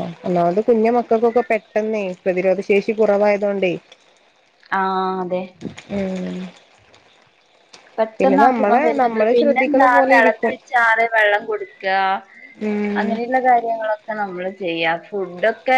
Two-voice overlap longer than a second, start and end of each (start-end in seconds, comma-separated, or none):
8.5-10.6